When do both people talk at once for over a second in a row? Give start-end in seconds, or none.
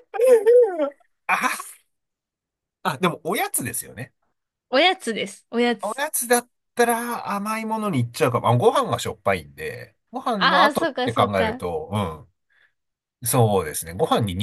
10.3-11.6